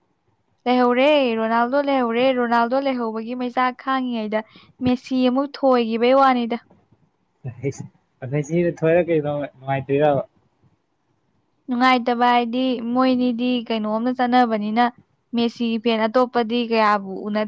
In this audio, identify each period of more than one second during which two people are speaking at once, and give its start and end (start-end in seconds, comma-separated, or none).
none